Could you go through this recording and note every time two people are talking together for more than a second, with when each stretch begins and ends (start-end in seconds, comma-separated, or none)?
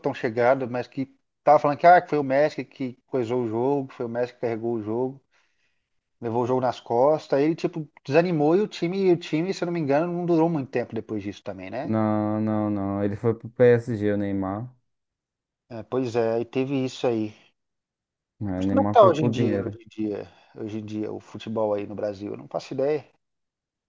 18.6-19.8